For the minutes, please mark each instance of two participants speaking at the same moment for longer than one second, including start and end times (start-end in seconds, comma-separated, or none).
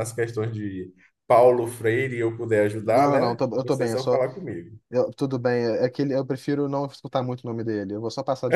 2.8-4.2